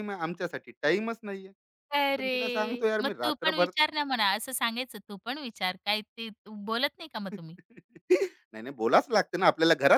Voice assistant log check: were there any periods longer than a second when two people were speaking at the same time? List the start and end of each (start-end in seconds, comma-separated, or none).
1.9-3.7